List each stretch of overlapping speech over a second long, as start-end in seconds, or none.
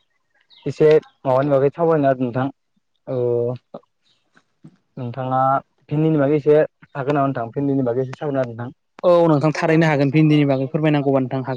none